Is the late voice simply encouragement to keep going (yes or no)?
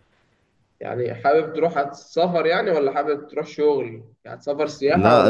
no